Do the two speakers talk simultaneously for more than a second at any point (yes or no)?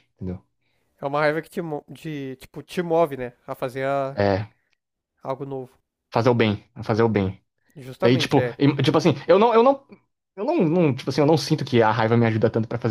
no